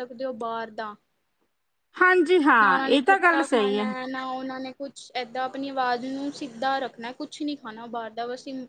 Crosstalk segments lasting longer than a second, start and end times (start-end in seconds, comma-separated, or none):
2.6-3.9